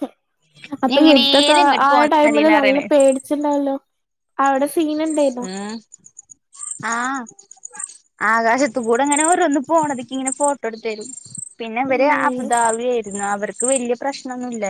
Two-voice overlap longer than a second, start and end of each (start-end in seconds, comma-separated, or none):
0.9-2.8